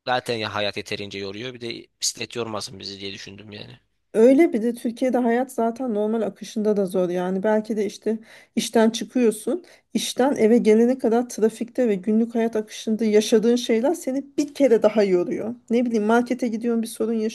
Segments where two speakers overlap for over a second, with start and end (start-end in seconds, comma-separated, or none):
none